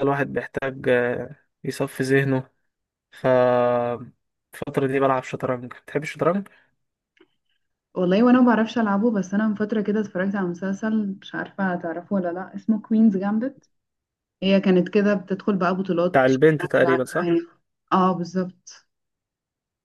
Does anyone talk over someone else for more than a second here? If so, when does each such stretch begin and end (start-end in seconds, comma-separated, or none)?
16.1-17.4